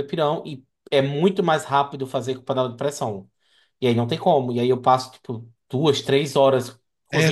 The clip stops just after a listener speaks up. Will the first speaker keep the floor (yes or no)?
no